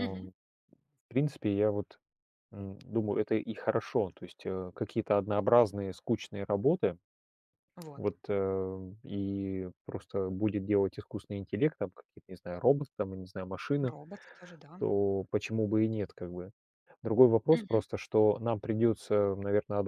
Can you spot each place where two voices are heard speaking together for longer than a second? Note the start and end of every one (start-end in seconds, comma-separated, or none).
none